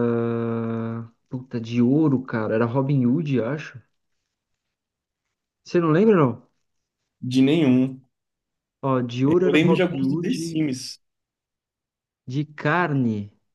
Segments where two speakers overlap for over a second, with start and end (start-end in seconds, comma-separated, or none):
9.2-10.7